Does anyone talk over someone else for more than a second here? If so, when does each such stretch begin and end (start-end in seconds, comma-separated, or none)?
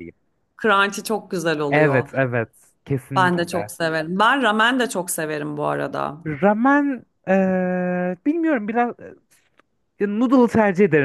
none